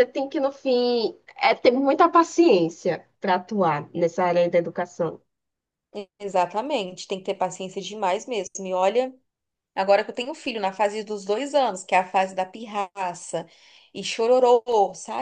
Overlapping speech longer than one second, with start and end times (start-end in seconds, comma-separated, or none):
none